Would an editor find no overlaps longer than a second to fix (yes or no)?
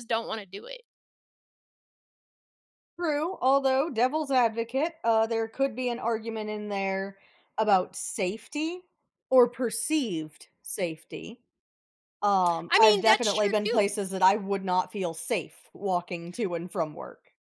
no